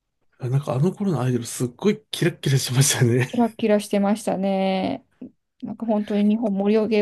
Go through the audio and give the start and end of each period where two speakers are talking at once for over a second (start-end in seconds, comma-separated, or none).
none